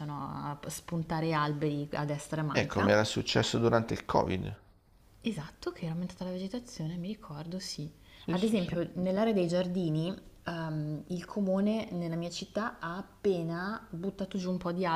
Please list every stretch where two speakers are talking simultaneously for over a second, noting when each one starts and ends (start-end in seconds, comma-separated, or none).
none